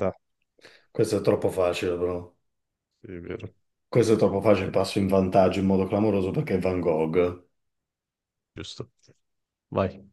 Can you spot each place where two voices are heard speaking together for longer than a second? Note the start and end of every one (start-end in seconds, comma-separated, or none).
none